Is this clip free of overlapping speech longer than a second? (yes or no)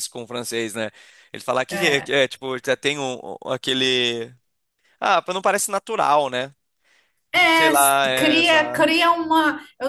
no